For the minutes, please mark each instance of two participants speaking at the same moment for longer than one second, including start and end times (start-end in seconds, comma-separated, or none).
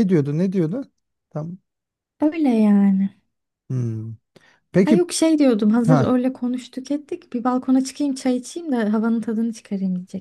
none